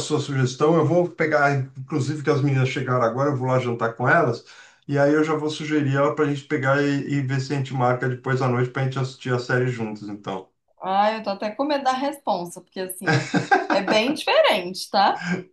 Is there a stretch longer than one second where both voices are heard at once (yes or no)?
no